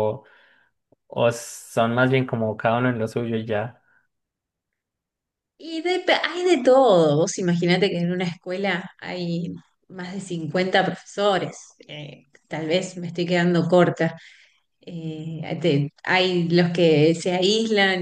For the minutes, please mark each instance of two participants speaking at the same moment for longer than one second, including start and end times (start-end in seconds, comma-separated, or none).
none